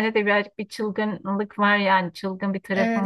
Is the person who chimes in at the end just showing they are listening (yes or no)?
no